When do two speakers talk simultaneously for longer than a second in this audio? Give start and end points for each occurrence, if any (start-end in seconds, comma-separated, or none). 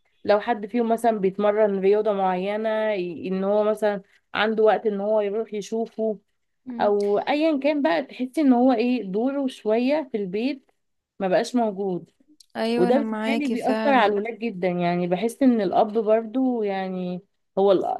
12.8-14.2